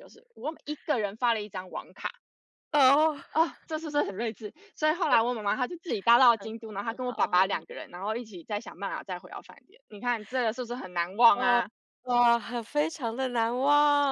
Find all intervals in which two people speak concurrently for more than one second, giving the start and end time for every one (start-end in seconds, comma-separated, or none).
6.3-7.7